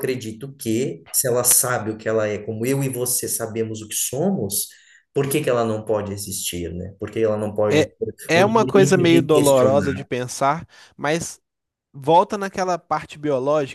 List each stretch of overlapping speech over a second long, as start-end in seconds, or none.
7.7-10.1